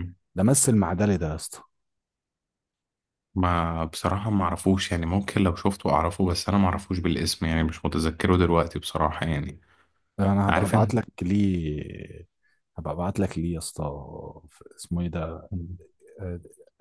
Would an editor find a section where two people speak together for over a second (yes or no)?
no